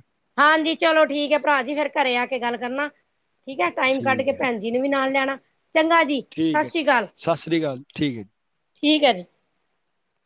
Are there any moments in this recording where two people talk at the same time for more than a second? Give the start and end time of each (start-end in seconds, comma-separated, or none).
none